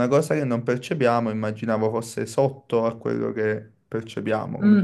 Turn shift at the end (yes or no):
yes